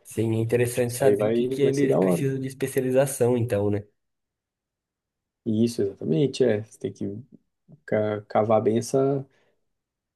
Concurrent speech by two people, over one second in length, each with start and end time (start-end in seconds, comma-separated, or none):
0.7-2.3